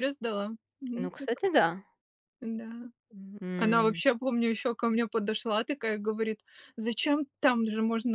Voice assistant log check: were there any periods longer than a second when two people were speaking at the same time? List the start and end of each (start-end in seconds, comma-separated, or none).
none